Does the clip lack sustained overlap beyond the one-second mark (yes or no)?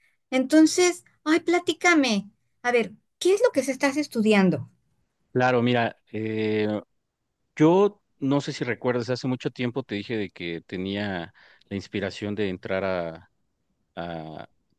yes